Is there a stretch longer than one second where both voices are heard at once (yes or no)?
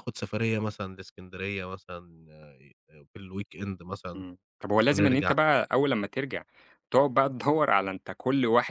no